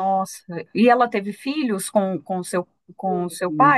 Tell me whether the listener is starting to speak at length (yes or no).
yes